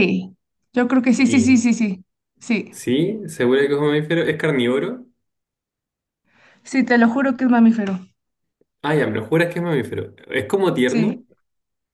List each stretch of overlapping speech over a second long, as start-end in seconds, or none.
none